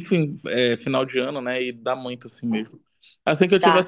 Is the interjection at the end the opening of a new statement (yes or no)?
no